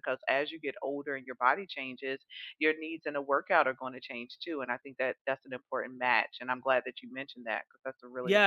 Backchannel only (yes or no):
no